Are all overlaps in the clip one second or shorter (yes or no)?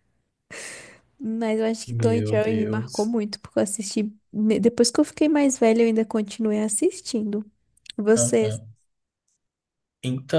no